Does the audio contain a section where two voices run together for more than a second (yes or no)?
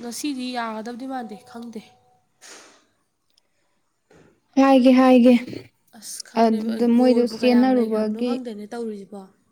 yes